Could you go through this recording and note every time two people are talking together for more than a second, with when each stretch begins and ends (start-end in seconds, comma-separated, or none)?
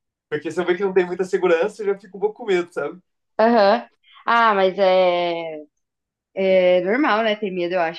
none